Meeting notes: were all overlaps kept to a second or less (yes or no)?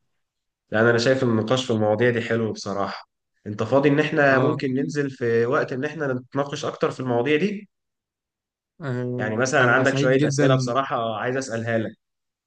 no